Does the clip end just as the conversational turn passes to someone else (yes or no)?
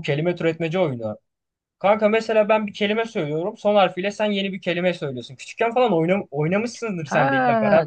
yes